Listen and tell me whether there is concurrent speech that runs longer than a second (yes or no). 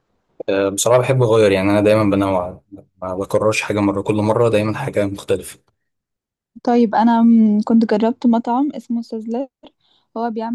no